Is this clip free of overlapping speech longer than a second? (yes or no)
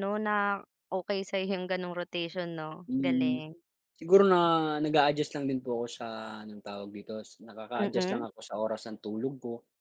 yes